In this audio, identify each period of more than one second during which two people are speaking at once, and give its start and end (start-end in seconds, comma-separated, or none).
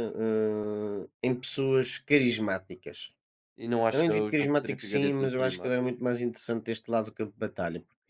3.9-5.8